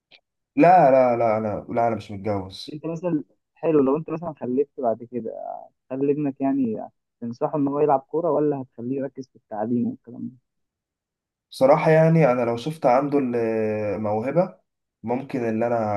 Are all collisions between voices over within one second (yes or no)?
yes